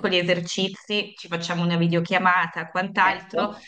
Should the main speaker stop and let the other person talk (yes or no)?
no